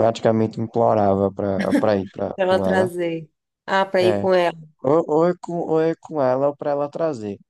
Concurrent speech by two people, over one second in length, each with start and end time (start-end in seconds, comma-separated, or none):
none